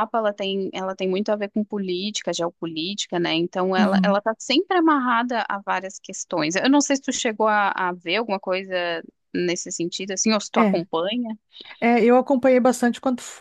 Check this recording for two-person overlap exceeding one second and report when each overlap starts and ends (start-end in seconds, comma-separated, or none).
none